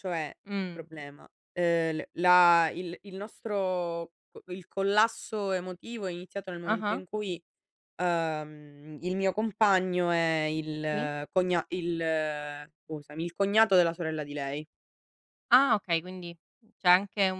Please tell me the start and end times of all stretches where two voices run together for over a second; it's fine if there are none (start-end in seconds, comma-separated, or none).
none